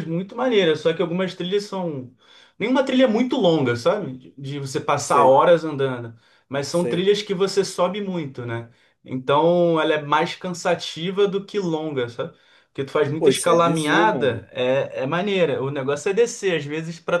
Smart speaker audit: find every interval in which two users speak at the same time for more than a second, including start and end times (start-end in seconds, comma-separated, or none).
13.2-14.5